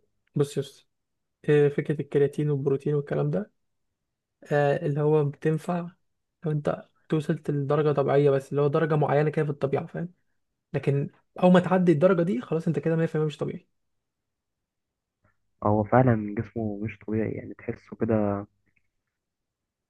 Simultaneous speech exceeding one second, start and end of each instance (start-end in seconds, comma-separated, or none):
none